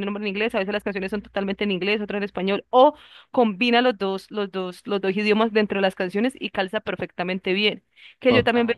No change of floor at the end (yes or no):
yes